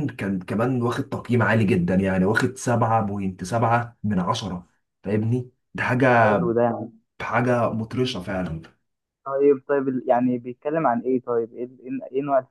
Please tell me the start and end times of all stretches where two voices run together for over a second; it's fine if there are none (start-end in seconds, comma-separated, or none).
none